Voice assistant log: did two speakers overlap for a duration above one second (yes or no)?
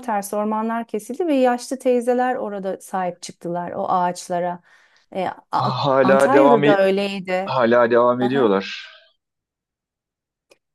yes